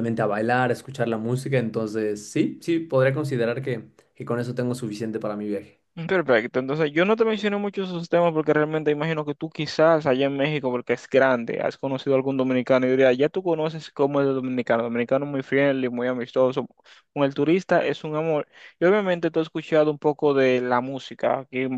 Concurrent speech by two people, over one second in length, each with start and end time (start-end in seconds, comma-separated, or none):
none